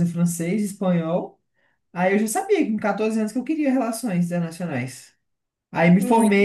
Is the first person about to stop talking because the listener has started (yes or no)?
no